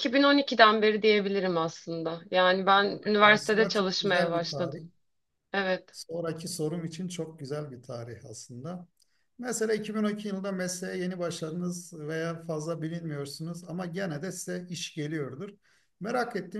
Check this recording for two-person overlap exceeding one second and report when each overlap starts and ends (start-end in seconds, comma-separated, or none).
3.3-4.8